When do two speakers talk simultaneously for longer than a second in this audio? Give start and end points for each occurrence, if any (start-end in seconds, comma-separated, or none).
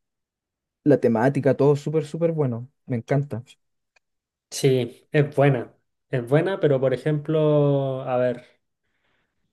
none